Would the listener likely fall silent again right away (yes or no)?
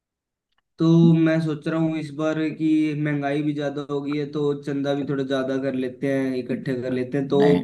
yes